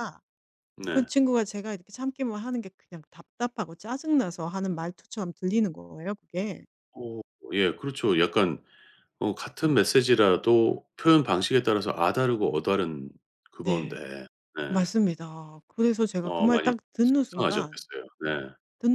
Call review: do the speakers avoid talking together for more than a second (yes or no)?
no